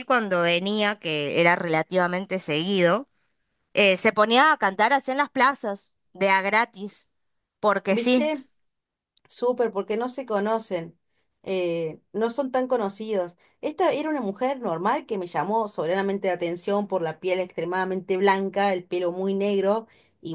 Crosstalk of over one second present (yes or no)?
no